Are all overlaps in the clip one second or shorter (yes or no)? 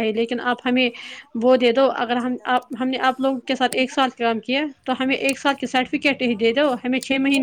no